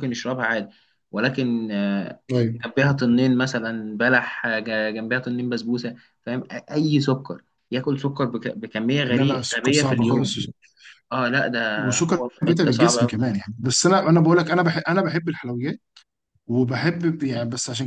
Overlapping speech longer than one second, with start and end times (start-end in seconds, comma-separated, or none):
9.1-10.4, 11.8-13.4